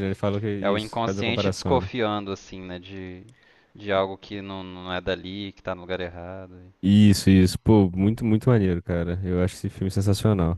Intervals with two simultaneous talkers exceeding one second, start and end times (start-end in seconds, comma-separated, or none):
0.6-1.9